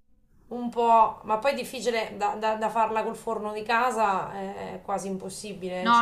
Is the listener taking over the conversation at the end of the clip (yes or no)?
yes